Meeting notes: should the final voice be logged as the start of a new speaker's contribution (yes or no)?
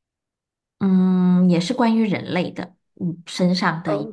no